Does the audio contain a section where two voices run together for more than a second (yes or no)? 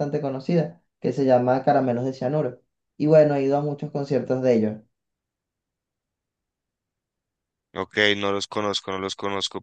no